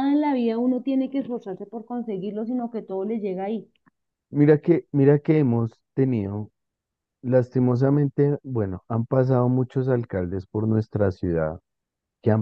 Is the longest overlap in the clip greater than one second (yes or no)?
no